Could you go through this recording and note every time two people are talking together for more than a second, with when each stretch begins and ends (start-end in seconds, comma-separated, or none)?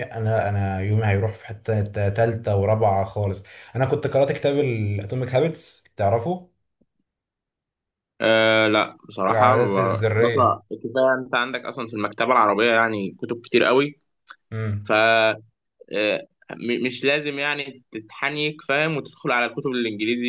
9.3-10.6